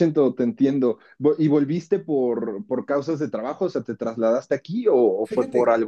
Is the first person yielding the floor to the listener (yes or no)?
yes